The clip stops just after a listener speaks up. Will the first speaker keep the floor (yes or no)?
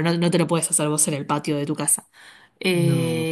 yes